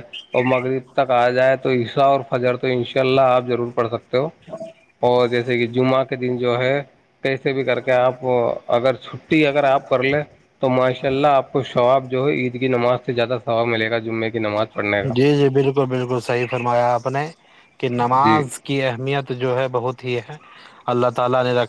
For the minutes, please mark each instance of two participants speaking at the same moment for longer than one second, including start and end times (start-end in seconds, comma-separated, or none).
none